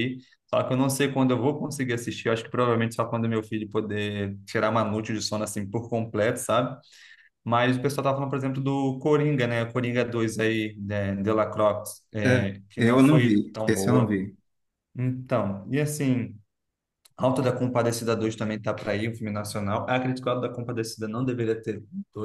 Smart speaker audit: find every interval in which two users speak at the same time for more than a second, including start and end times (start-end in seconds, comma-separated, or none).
12.2-14.2